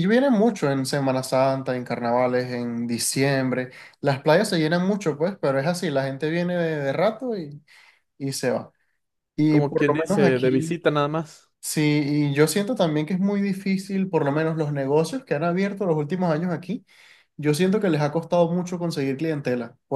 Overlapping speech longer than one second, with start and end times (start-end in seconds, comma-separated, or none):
9.5-10.8